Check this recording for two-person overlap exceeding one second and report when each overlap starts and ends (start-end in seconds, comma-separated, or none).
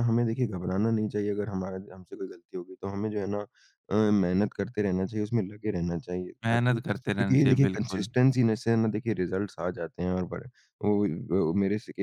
6.5-8.1